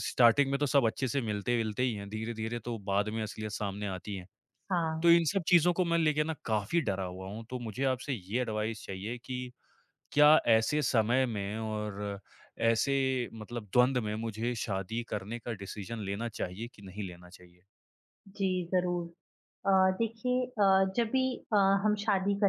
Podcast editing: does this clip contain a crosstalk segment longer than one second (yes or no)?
no